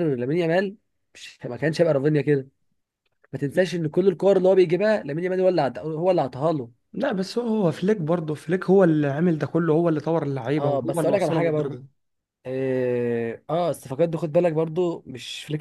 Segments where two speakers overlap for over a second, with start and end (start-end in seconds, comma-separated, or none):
10.6-11.8